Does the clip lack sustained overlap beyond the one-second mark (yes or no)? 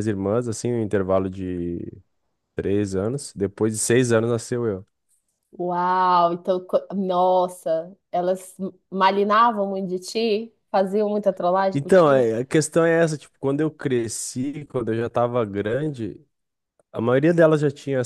yes